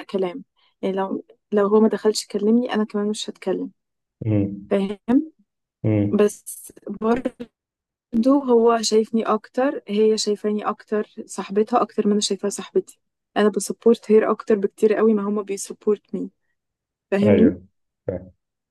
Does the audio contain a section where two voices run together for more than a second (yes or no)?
no